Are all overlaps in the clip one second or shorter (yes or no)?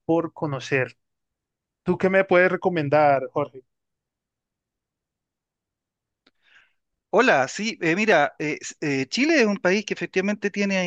yes